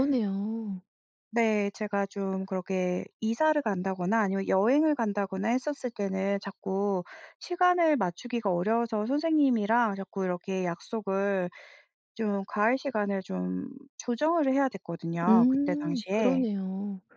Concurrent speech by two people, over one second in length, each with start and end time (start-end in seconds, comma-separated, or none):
15.3-16.5